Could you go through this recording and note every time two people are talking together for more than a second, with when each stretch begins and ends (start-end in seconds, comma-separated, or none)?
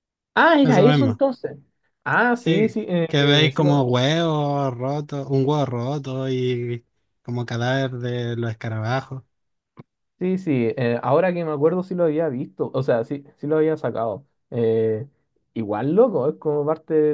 2.3-3.9